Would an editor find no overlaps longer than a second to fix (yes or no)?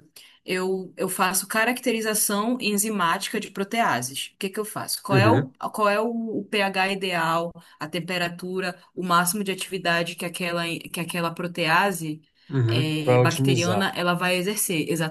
no